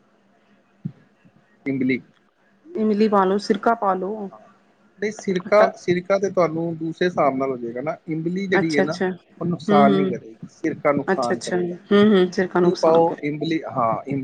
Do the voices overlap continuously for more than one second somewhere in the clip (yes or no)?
yes